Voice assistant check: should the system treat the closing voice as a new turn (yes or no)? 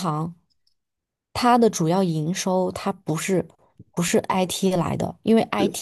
no